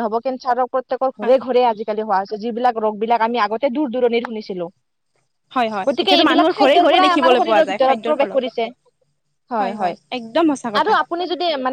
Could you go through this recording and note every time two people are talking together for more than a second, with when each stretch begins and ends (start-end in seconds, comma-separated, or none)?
5.9-8.4